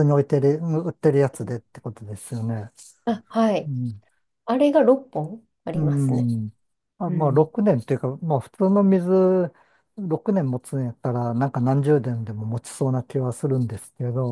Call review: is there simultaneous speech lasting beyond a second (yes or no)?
no